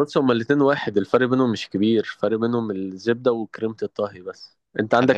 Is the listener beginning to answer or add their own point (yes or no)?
no